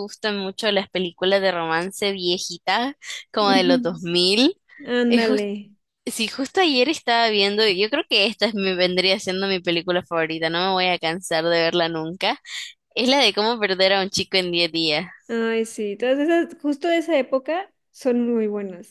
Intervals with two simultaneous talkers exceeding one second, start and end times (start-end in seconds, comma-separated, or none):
none